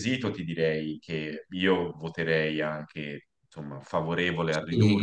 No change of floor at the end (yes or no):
no